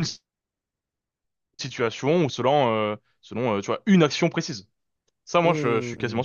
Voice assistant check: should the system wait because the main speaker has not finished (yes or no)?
no